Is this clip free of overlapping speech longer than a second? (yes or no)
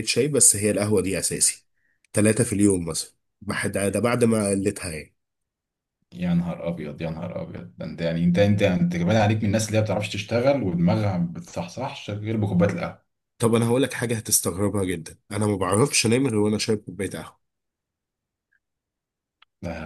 yes